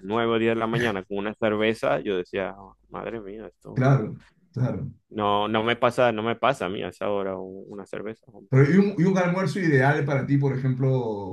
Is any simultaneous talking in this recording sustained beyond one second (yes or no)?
no